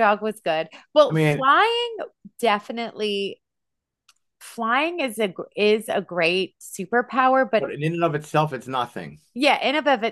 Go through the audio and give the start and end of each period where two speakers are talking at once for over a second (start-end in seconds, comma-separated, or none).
none